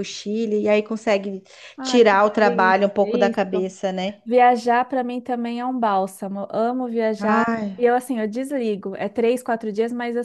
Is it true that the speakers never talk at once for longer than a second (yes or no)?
no